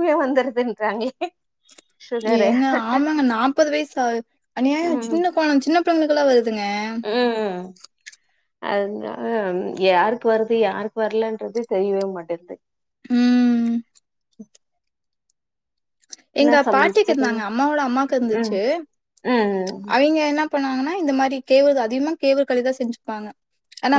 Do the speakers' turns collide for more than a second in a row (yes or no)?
yes